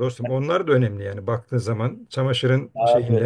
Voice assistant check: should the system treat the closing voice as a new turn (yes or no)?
yes